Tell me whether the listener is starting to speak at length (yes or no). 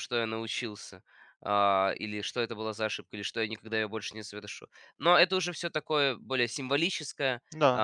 no